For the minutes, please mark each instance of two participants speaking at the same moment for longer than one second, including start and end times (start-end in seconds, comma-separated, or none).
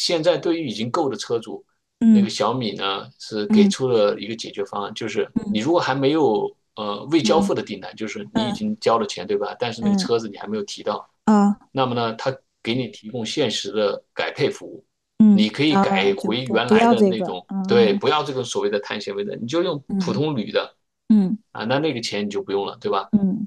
15.3-18.0